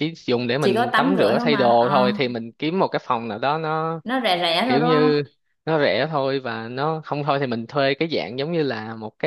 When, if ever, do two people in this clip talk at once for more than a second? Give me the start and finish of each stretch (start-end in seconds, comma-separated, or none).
0.6-2.0